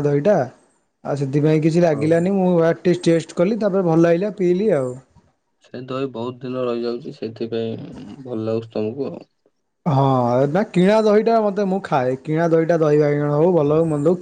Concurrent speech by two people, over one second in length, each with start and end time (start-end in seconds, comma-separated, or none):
none